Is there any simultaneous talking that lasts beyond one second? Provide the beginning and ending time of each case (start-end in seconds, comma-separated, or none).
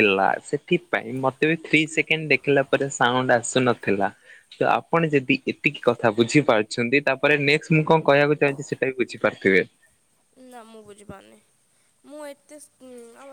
none